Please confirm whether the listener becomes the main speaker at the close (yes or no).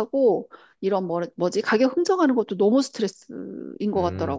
yes